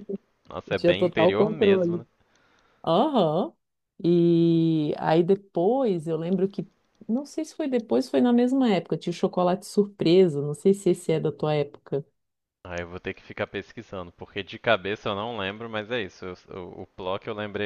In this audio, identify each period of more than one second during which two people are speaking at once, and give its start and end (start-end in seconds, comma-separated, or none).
0.7-2.0